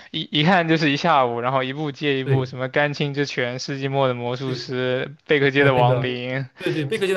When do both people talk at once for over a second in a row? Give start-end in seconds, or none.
none